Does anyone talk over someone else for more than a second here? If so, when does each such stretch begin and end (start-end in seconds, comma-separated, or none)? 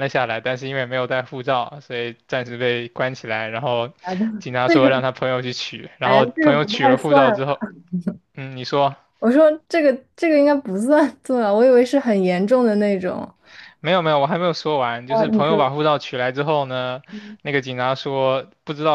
6.0-7.4